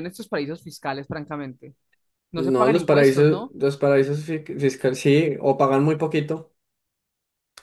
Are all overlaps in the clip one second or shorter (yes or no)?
no